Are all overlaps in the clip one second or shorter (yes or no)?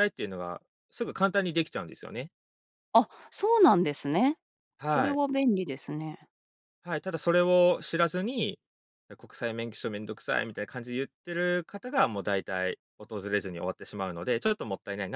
yes